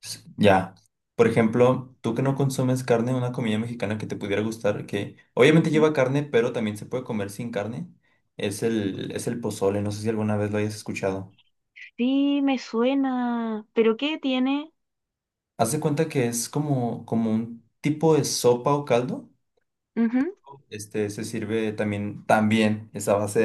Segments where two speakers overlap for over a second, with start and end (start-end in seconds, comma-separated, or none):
none